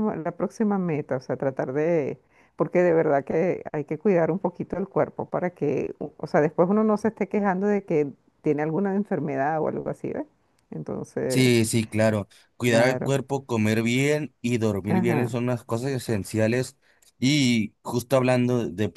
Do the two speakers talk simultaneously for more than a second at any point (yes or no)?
no